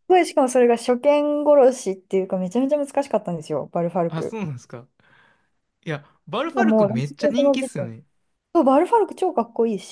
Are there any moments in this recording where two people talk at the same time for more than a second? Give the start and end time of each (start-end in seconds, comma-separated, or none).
6.5-8.0